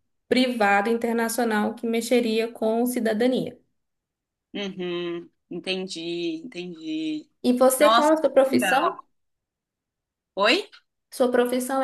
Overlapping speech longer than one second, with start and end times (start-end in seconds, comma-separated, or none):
7.8-9.0